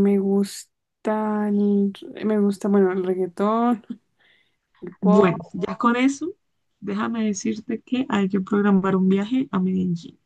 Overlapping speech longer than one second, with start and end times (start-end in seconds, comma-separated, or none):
none